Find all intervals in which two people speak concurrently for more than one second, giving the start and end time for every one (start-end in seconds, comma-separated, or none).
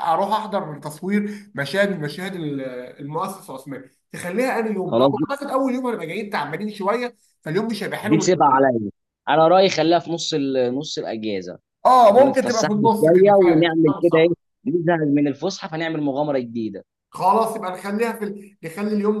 12.1-14.3